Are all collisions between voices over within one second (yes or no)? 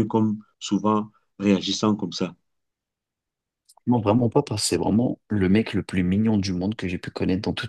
yes